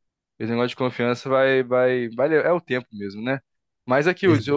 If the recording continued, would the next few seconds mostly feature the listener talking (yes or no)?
no